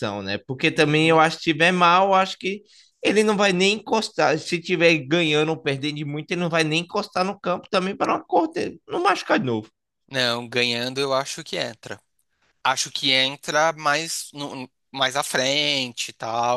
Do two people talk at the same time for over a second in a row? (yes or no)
no